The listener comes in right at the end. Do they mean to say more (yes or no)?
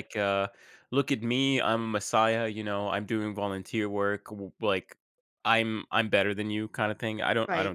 no